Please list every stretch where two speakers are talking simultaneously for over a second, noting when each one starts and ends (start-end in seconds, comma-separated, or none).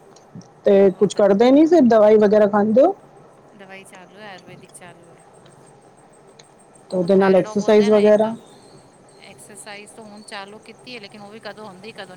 7.0-8.2